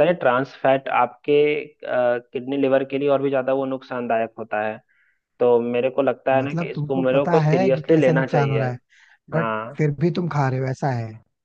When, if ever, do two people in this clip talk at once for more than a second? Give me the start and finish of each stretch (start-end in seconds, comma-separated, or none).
6.4-8.6